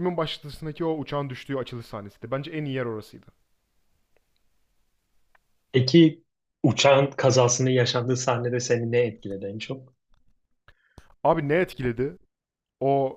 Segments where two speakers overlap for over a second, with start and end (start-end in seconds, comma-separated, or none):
none